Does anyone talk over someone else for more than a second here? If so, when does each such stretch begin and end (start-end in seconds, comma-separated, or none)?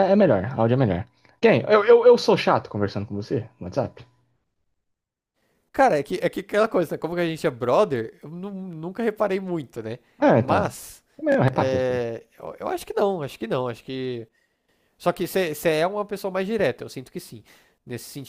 none